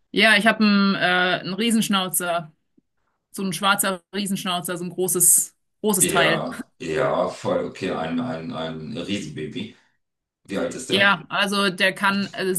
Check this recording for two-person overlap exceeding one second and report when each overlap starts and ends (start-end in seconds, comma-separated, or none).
none